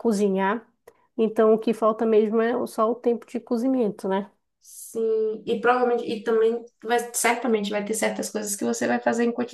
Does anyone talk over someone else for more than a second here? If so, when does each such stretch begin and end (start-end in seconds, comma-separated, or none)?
none